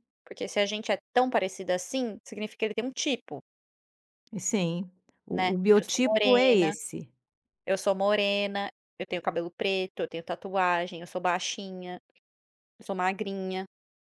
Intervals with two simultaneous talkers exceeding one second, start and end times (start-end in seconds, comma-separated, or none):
5.3-6.7